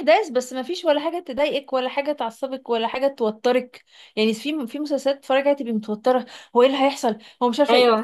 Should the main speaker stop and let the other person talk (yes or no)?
no